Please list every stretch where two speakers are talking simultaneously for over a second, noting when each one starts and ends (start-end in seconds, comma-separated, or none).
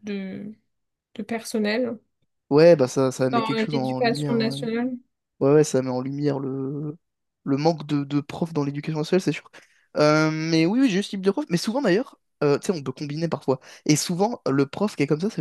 3.3-4.6